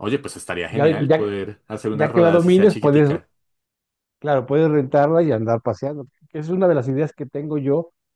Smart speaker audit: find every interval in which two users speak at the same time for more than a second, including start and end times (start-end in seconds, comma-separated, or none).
1.9-3.1